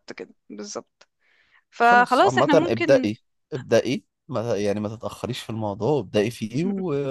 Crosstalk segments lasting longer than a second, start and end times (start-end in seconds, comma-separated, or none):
1.8-3.1